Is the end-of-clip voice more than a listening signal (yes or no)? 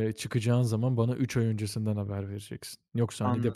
no